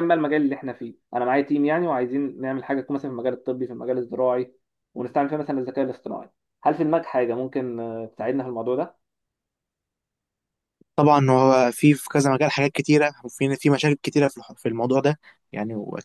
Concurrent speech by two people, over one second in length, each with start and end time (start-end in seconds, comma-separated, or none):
none